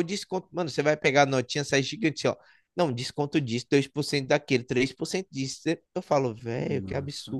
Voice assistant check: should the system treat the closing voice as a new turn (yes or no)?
yes